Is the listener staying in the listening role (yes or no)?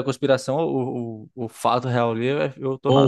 no